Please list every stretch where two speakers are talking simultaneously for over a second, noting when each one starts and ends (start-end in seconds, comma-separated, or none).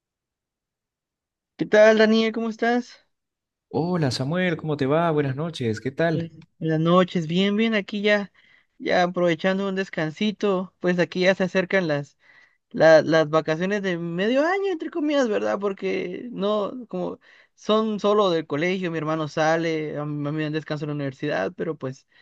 none